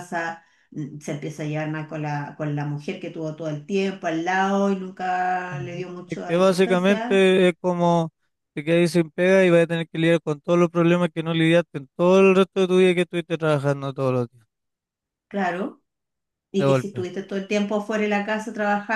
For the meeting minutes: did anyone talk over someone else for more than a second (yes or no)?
yes